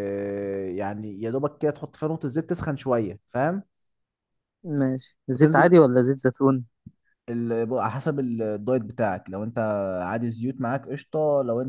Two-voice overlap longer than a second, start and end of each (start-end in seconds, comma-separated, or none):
none